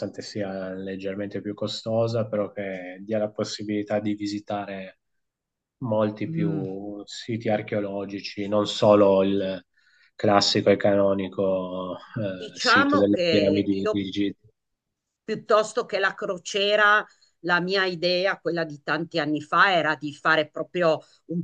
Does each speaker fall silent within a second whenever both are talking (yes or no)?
no